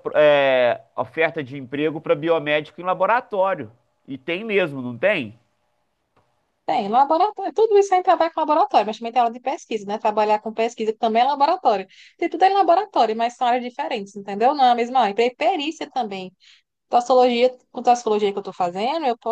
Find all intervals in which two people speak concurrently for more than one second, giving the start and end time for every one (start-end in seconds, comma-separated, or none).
none